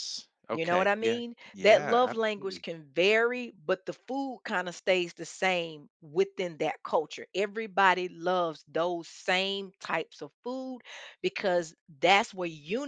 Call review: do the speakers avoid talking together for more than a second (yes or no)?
no